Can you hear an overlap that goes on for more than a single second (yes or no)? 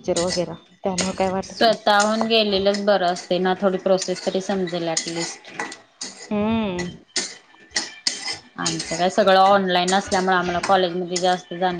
no